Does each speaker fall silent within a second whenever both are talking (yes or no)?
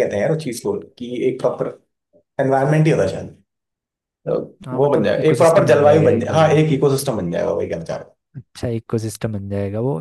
no